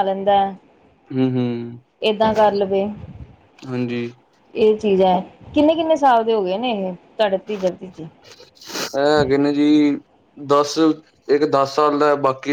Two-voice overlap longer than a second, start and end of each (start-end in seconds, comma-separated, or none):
none